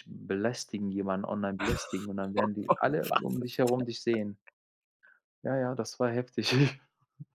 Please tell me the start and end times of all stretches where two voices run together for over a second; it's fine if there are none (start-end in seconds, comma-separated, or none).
2.3-3.9